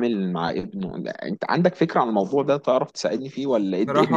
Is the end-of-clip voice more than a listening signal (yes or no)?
yes